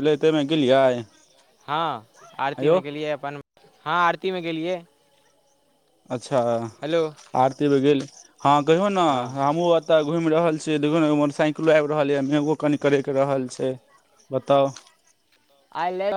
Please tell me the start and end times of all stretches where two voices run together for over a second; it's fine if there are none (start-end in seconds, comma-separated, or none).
none